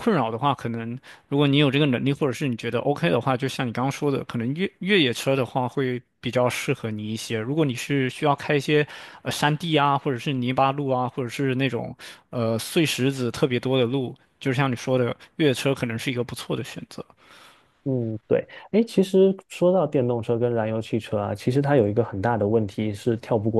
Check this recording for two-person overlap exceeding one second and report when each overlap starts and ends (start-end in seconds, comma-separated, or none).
none